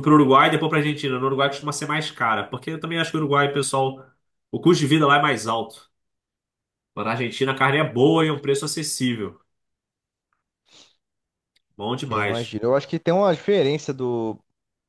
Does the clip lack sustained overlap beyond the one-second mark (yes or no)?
yes